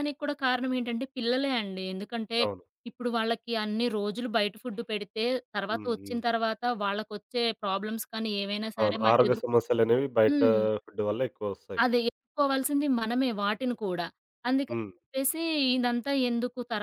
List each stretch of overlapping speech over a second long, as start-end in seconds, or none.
none